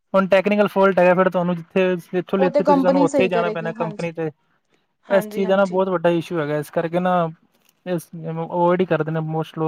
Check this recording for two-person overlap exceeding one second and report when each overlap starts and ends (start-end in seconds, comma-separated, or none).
2.4-3.7